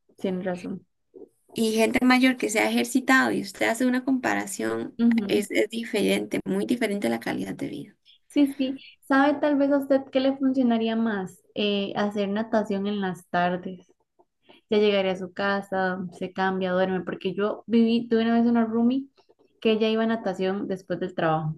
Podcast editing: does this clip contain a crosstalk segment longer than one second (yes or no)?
no